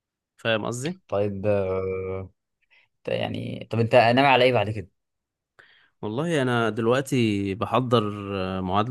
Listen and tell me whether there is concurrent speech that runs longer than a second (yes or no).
no